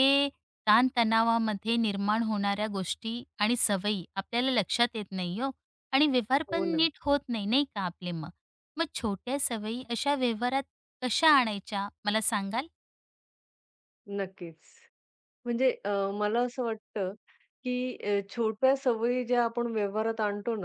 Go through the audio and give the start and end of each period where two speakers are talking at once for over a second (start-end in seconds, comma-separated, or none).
none